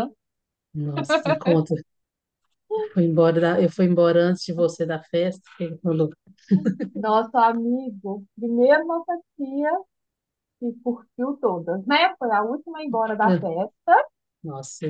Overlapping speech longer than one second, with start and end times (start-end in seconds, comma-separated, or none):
none